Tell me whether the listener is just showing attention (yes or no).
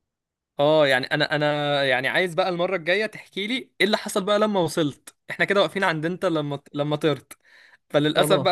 yes